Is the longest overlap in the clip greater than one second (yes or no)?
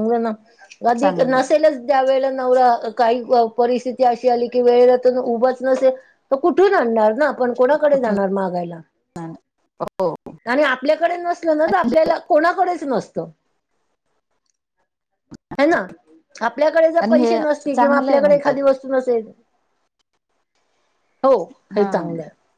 yes